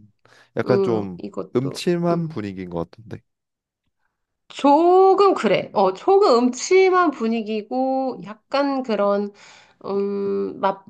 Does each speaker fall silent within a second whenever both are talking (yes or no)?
no